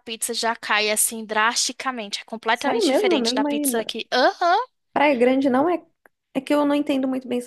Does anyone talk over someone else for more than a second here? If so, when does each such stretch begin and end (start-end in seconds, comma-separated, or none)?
2.5-3.9